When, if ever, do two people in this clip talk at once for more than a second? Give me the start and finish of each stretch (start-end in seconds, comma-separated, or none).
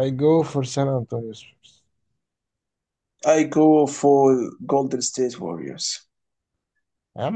none